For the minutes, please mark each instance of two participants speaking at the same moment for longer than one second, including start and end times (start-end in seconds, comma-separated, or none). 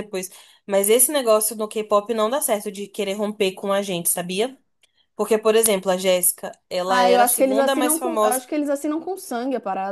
6.9-8.4